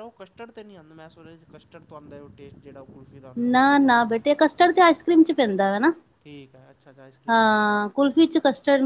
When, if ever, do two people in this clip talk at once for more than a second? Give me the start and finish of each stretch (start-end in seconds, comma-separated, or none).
3.5-5.0